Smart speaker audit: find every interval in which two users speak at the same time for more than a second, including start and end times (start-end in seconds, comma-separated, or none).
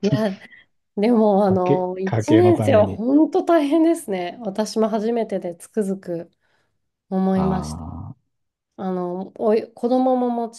1.5-3.0